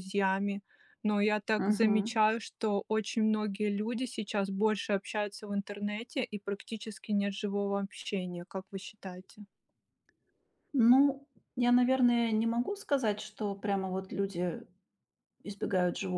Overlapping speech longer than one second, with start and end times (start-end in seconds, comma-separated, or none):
none